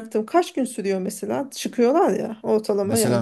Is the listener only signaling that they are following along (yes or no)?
no